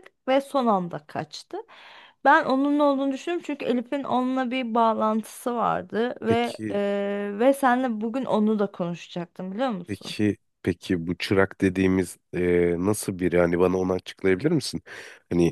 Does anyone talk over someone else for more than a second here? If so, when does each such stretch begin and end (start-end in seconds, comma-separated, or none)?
none